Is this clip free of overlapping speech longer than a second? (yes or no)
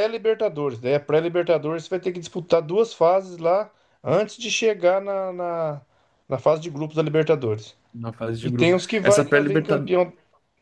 no